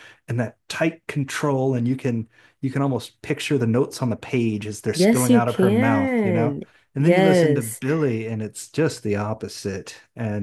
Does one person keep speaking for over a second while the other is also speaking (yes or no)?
yes